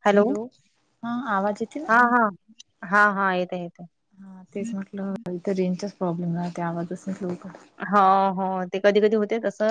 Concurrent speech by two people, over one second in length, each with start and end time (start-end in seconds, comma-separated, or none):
none